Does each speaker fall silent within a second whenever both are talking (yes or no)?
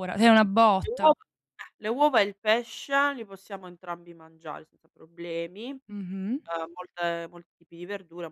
yes